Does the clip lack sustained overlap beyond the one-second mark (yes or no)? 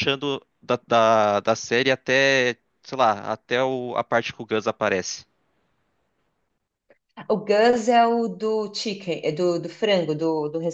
yes